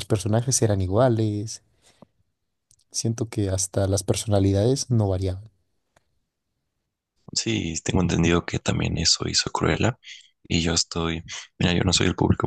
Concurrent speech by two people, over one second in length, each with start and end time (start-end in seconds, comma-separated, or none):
none